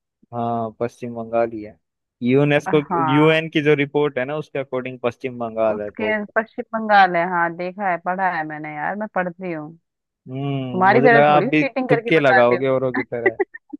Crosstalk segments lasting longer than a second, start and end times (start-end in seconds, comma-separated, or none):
10.7-12.7